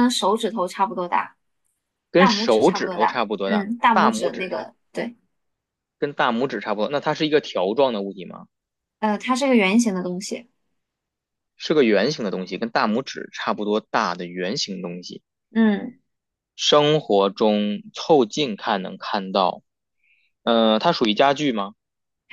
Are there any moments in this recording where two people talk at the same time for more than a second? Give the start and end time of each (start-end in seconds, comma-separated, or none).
2.2-4.6